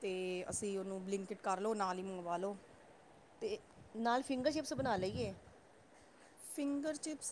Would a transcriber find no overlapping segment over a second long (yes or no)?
yes